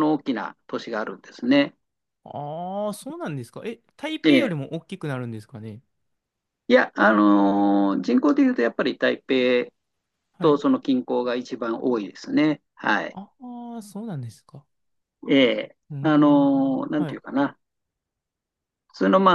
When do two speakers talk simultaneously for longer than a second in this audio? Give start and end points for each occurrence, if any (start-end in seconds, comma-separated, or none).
15.9-17.2